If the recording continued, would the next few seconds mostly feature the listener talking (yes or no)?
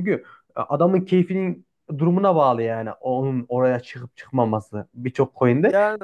no